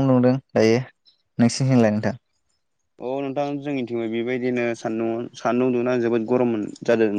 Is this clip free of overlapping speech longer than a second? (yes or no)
yes